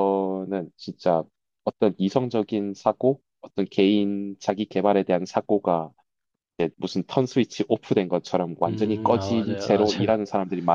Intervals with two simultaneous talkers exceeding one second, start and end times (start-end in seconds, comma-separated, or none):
8.7-10.2